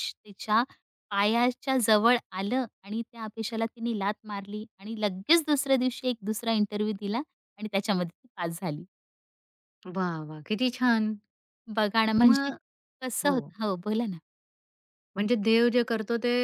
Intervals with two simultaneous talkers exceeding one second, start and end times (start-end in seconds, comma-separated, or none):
none